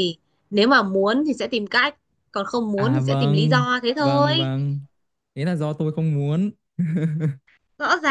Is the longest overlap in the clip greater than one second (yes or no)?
yes